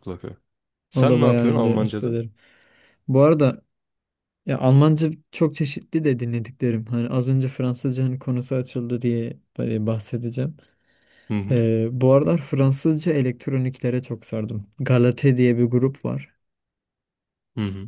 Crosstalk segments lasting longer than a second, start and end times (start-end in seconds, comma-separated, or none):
0.9-2.2